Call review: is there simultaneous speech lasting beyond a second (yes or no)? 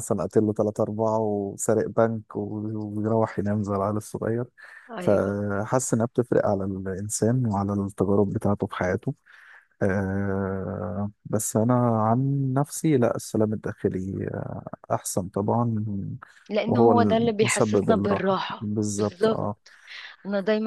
yes